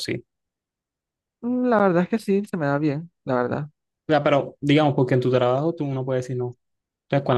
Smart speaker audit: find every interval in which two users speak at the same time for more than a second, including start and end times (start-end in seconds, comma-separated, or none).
none